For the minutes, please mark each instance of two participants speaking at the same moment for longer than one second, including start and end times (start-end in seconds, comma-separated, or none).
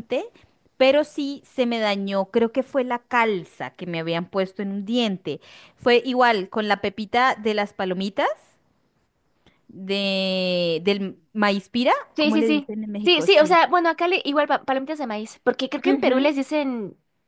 12.2-13.6